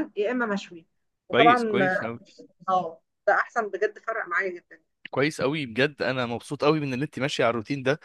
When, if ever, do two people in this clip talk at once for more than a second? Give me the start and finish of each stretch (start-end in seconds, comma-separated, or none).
none